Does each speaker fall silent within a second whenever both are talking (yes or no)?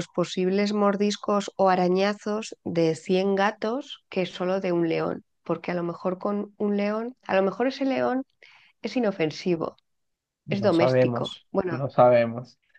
no